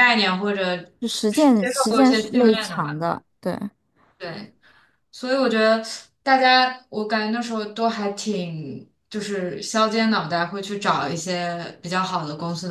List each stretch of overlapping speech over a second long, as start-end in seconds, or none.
1.3-3.0